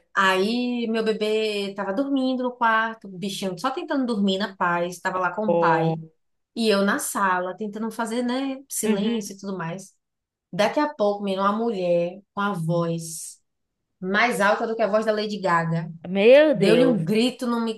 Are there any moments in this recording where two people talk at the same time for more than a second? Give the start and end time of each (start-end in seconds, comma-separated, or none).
none